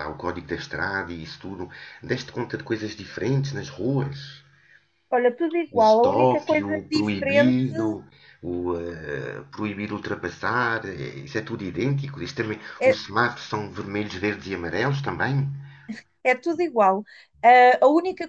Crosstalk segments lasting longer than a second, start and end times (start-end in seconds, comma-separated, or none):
5.8-7.5